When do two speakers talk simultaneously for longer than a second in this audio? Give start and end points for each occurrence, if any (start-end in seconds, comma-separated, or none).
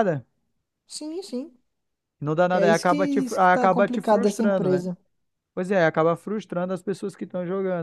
2.5-4.9